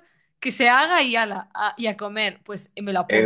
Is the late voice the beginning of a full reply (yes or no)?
yes